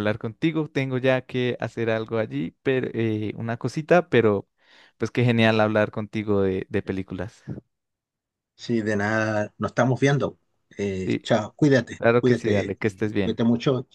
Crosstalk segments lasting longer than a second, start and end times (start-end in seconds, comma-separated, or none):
12.0-13.4